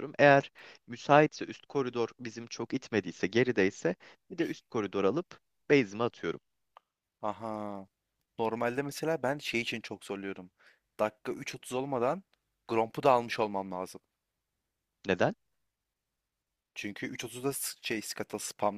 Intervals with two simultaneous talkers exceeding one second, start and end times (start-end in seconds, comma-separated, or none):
none